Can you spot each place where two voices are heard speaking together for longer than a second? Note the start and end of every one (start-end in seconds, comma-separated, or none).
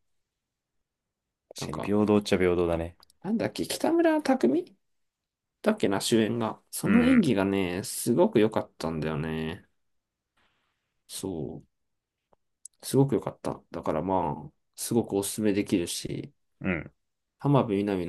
none